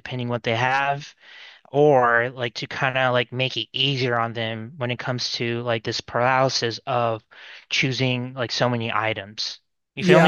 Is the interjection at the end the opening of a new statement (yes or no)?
yes